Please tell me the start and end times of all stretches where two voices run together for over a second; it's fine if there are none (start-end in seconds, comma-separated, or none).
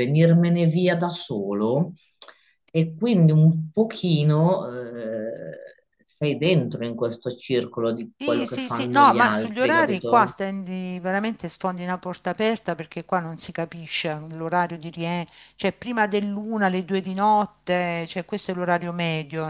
8.2-10.3